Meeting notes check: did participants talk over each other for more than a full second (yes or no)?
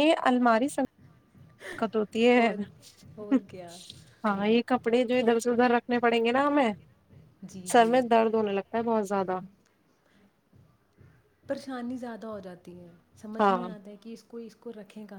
no